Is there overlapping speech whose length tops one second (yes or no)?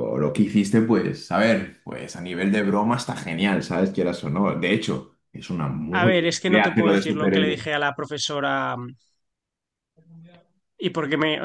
yes